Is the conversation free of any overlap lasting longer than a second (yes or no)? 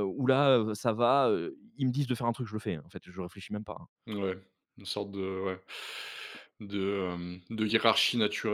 yes